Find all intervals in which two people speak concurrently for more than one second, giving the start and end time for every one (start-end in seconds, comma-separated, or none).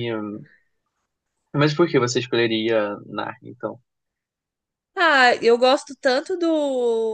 none